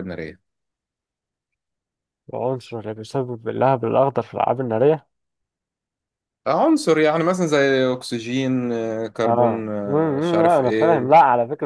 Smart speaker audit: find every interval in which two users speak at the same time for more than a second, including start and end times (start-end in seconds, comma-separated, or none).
9.2-11.1